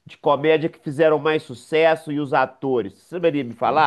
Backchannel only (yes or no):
no